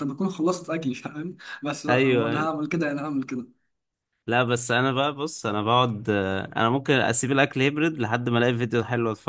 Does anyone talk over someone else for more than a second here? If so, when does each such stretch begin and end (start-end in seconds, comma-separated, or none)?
none